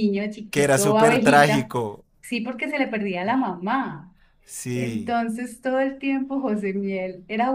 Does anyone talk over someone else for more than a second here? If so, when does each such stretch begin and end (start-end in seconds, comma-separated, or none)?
0.5-1.7